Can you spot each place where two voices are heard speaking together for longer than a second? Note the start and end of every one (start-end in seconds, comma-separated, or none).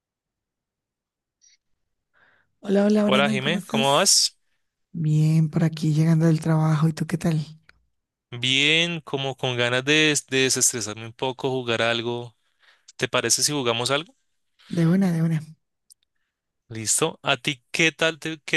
3.0-4.2